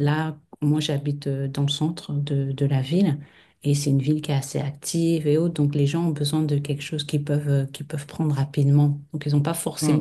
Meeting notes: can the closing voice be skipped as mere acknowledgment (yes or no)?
yes